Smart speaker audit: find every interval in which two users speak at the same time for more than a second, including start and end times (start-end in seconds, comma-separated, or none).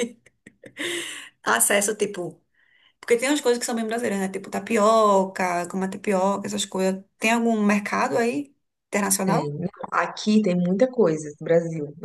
none